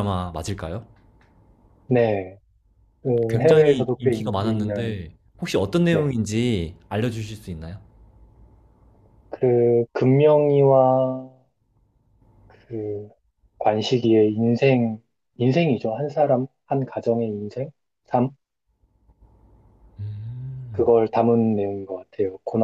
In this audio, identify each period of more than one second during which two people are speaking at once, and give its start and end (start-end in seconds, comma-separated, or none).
3.3-5.0